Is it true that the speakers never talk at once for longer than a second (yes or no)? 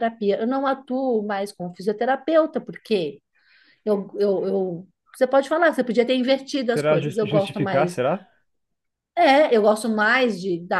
no